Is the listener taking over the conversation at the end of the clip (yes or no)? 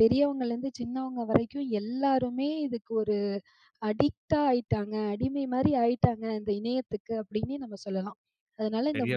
no